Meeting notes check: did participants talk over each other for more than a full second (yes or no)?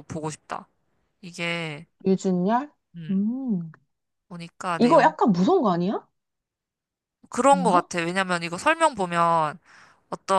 no